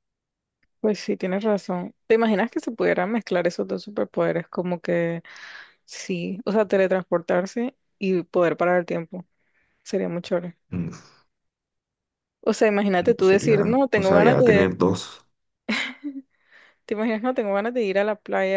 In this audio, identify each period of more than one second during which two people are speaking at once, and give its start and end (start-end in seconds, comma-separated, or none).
13.1-14.7